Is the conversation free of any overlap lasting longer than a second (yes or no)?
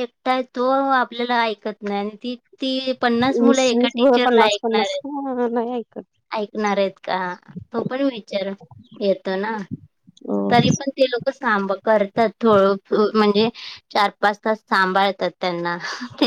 no